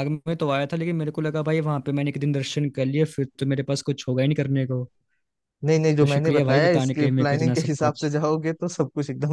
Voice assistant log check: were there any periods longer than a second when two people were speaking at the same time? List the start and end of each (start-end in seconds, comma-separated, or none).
6.0-8.1